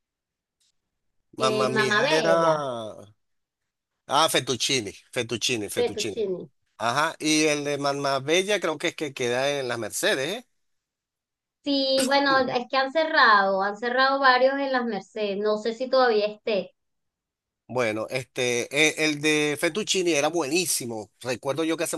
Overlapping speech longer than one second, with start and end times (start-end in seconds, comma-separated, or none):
1.4-2.7